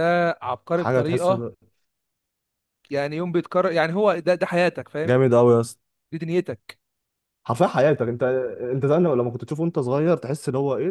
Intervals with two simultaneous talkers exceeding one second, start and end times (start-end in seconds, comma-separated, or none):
none